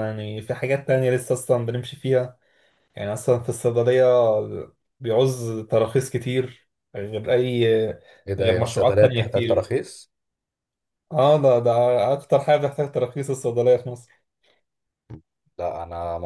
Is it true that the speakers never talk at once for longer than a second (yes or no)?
no